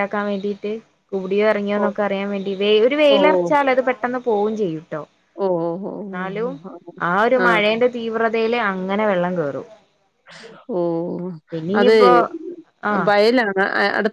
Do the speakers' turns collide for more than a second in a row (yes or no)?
no